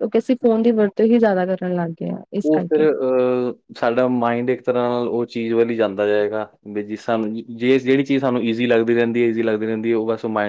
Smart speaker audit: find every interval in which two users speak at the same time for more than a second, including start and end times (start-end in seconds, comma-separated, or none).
none